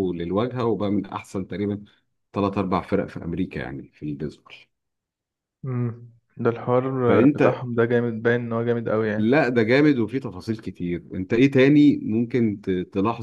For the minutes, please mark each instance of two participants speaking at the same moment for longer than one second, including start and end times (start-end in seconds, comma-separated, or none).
none